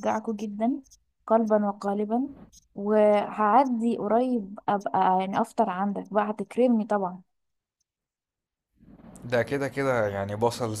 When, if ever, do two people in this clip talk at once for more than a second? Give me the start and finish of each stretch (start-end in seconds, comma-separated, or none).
none